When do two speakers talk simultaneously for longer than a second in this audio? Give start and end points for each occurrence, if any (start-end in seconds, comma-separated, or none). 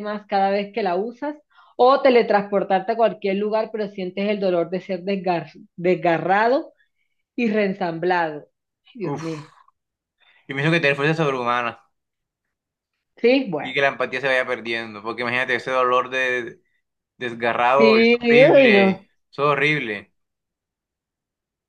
17.8-19.1